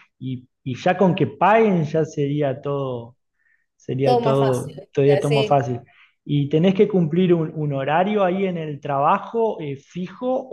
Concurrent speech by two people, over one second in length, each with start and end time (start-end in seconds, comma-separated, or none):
4.0-5.5